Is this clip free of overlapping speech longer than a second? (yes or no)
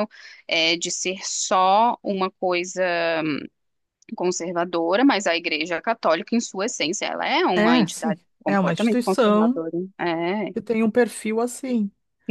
no